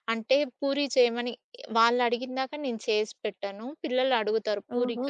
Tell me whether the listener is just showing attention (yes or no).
yes